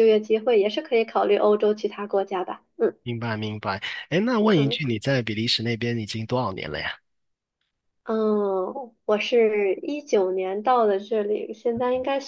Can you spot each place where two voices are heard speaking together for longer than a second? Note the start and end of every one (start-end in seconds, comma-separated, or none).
none